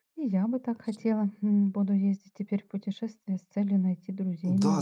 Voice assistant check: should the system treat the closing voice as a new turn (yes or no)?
yes